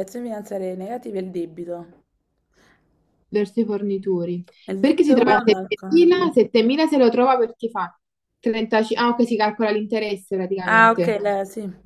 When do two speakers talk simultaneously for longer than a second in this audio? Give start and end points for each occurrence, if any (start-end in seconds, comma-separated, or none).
4.7-6.2